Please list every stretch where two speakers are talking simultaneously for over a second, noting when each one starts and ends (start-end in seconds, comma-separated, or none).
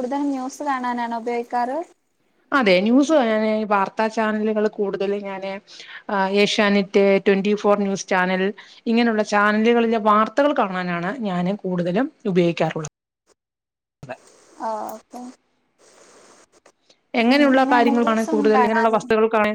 17.4-19.0